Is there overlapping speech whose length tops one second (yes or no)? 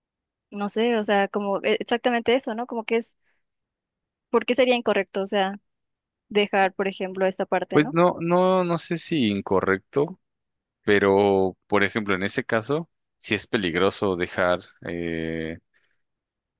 no